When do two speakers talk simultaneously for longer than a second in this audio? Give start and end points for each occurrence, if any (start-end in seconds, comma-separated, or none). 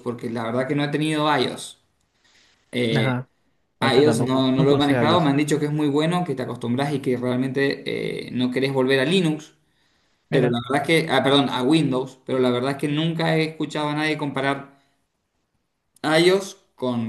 3.8-5.3